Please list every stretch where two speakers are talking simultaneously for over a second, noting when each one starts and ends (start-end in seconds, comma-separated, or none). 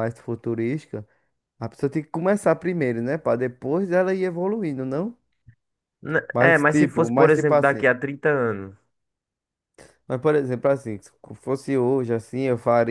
6.3-7.9